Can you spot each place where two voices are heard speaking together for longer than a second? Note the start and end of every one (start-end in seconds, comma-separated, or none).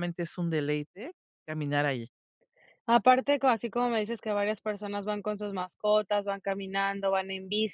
none